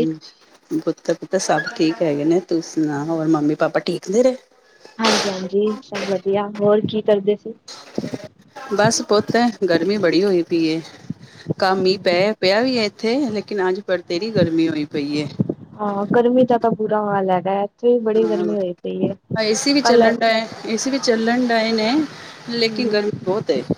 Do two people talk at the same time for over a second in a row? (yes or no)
no